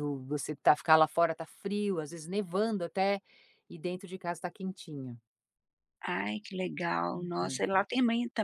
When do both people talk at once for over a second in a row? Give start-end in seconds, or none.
none